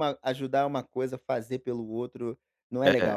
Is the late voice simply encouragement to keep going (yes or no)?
no